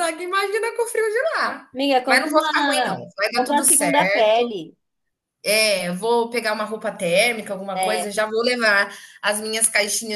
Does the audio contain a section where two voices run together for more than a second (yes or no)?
yes